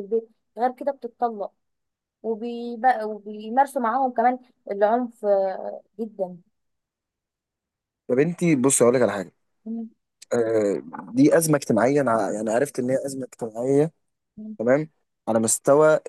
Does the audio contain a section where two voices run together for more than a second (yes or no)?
no